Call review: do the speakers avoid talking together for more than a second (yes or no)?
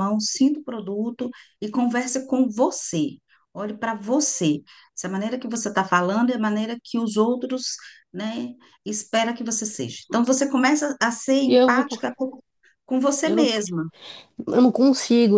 yes